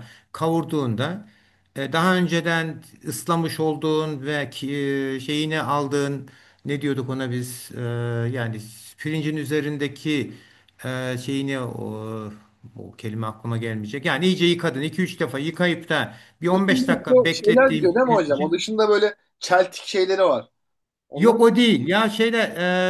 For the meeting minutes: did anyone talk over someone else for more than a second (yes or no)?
yes